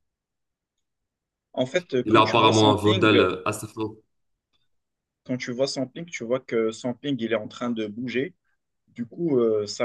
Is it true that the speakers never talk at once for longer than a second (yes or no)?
no